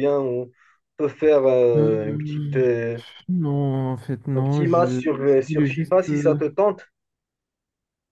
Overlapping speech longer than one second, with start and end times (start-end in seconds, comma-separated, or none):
4.3-6.4